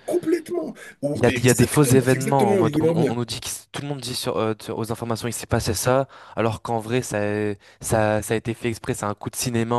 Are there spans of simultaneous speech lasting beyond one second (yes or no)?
yes